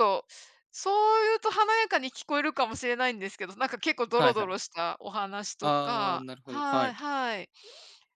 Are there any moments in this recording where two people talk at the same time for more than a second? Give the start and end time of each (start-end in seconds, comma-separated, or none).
5.6-7.0